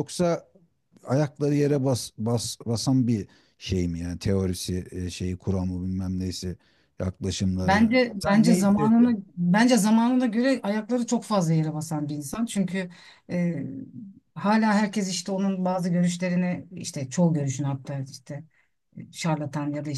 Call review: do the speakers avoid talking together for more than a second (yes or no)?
no